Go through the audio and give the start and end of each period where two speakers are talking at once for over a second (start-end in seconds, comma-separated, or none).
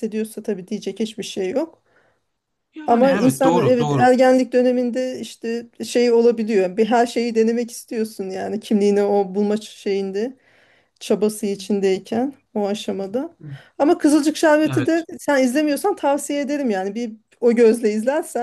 2.9-4.1